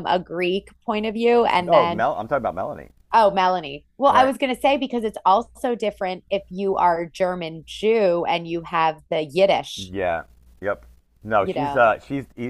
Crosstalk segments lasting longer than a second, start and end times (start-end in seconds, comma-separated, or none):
none